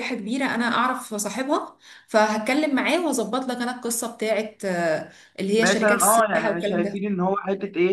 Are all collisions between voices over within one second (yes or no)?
no